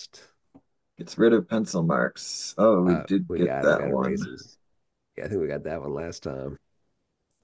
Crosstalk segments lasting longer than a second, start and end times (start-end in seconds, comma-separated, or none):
2.9-4.3